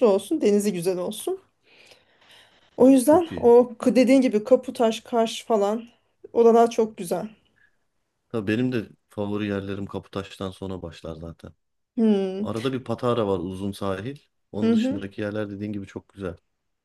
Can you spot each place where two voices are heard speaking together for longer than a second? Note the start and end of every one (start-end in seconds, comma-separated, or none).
none